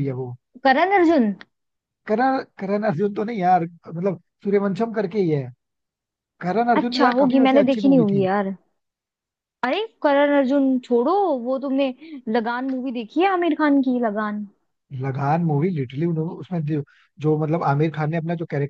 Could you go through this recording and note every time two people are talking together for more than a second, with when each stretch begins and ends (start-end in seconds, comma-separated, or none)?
6.8-8.3